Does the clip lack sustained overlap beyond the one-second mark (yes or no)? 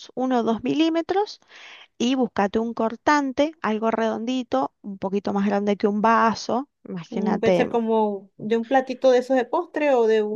yes